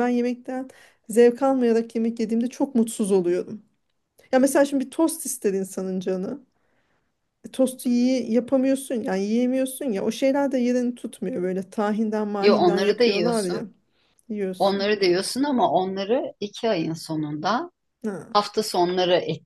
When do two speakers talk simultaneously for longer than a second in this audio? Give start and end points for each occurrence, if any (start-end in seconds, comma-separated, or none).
12.4-13.7